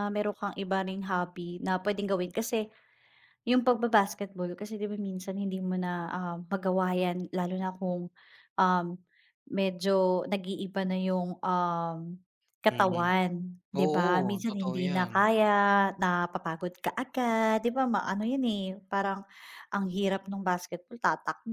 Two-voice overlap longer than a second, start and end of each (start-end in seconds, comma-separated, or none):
13.8-15.1